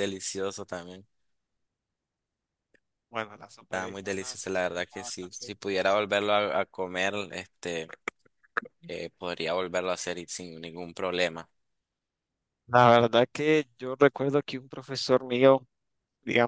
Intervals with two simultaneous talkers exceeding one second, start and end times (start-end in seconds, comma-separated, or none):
3.7-5.5